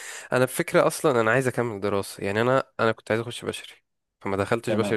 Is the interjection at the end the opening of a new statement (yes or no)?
no